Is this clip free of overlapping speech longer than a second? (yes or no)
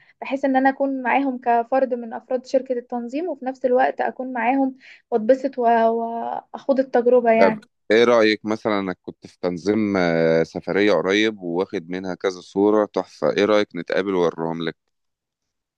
yes